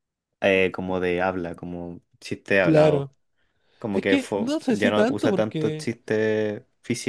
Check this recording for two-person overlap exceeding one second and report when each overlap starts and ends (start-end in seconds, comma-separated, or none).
3.9-5.9